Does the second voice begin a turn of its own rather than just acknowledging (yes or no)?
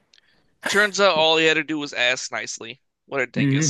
yes